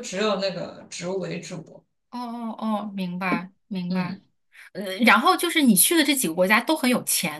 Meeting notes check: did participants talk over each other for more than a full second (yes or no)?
no